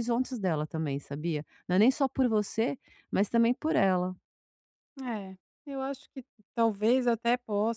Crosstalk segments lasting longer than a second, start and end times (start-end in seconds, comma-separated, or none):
none